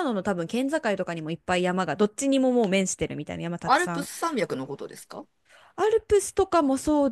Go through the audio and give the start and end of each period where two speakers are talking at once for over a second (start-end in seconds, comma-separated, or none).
none